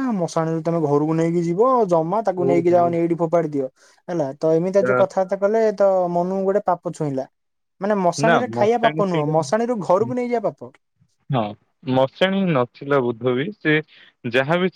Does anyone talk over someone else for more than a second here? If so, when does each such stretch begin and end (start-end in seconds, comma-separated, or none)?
8.2-10.1